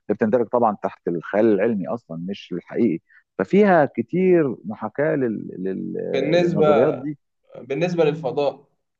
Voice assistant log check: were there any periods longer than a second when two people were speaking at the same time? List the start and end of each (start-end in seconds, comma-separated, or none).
none